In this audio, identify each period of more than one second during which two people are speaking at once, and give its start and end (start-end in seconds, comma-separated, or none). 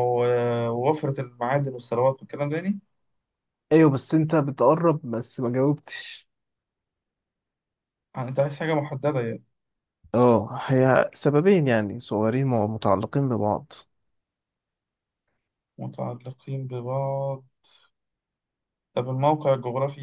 none